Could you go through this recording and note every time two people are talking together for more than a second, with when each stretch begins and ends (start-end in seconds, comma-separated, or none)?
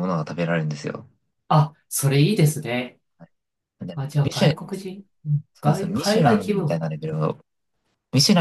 5.5-6.9